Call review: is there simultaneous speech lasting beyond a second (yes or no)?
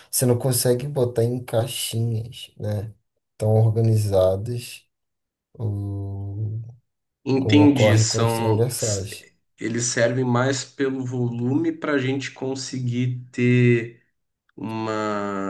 yes